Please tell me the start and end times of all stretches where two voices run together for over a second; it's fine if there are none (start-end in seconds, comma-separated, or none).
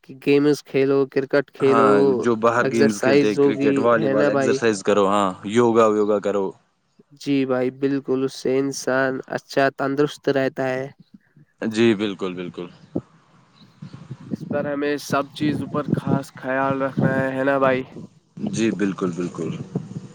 2.6-4.6